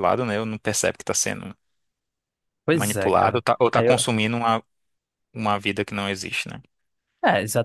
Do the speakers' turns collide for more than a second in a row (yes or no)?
yes